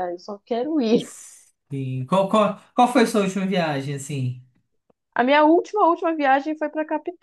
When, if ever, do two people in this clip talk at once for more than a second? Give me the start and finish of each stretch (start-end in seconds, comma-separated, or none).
none